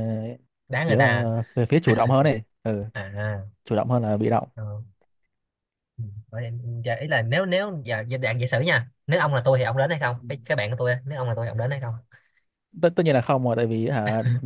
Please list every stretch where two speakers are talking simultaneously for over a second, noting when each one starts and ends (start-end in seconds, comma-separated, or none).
none